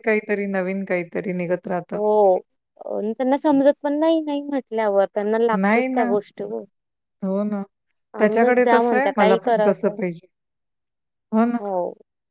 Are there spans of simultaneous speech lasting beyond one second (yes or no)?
yes